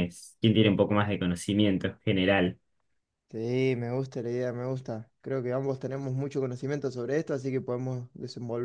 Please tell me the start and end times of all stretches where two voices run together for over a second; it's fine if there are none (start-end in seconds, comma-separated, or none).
none